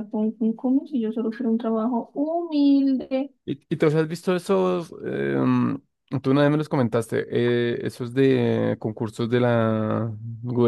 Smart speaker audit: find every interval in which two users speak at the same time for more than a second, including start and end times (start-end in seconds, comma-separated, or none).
none